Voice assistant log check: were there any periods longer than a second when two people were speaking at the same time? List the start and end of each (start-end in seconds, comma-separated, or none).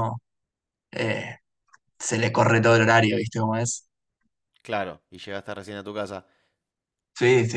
none